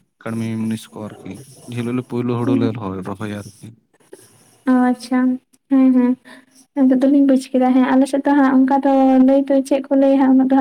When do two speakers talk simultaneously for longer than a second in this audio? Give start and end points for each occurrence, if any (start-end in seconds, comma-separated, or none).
none